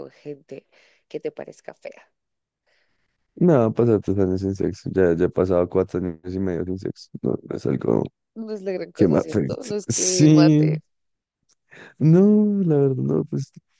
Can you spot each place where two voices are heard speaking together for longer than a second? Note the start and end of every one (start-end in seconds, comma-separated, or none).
8.9-10.8